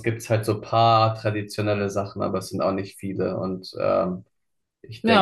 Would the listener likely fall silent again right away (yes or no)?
no